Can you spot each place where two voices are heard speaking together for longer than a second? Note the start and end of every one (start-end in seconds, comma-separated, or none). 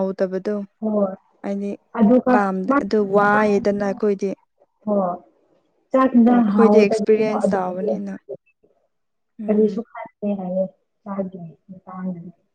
6.3-8.1